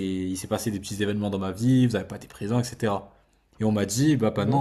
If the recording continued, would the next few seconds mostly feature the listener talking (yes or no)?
no